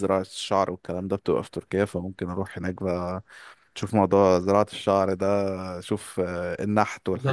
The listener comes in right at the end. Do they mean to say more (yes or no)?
yes